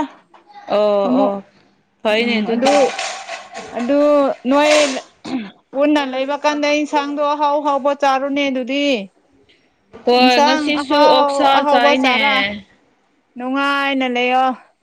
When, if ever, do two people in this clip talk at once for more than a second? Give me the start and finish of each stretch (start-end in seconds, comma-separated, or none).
10.2-12.3